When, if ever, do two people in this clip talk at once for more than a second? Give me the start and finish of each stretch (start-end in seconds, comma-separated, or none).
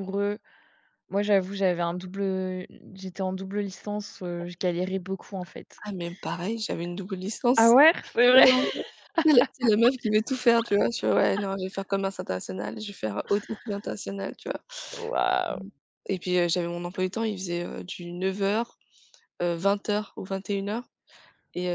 none